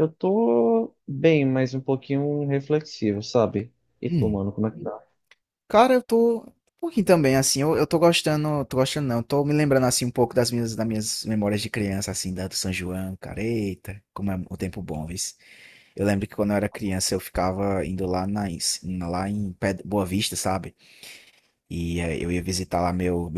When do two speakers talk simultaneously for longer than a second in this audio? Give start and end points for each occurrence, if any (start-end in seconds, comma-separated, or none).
none